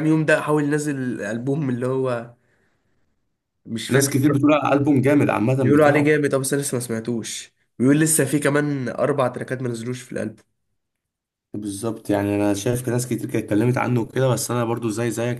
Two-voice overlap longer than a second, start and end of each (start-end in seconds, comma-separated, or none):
none